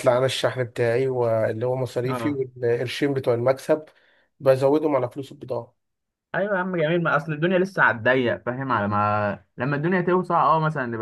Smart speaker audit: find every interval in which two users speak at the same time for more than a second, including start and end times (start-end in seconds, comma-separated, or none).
none